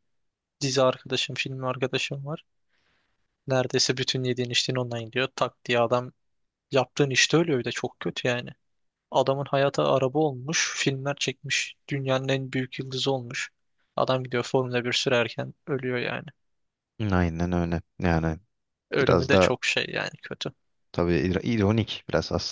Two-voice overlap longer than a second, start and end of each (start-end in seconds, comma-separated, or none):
none